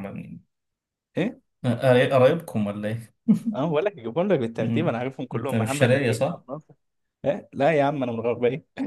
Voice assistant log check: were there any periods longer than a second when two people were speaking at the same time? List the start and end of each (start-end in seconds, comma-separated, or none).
4.6-6.4